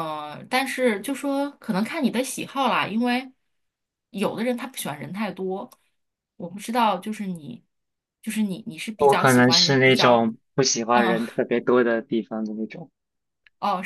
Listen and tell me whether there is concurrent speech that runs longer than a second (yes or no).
yes